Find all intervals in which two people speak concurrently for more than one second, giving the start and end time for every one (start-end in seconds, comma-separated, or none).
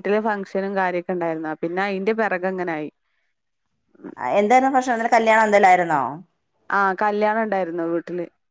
none